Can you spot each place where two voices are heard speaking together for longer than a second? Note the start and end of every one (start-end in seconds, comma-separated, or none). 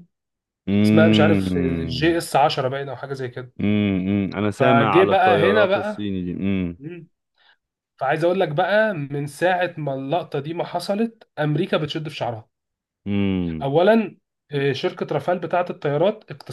0.8-2.2, 4.6-6.1